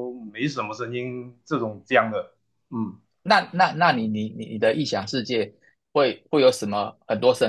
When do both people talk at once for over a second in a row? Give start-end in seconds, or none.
none